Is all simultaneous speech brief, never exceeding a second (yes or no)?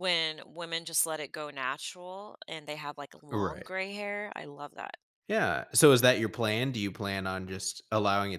yes